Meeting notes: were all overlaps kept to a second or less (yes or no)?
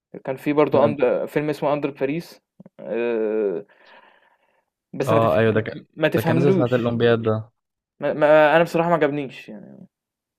no